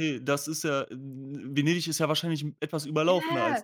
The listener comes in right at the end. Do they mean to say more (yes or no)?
yes